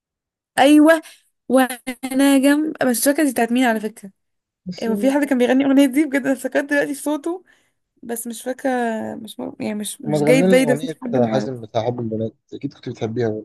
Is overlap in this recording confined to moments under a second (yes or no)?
no